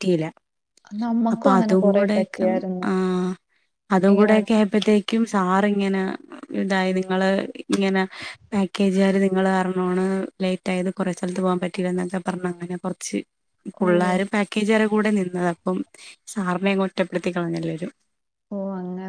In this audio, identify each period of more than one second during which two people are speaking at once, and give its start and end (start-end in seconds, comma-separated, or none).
1.3-2.9